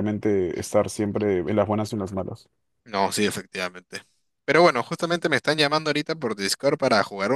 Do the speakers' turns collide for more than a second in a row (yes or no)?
no